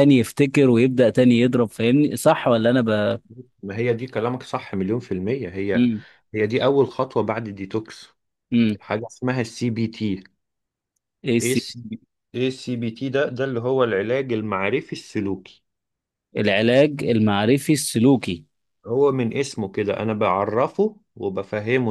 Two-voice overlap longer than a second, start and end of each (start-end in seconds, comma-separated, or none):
none